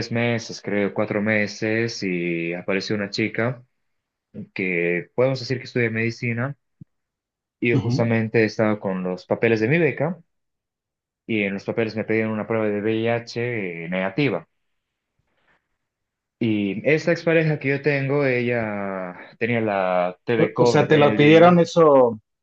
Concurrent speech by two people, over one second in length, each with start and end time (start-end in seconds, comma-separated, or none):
20.4-21.6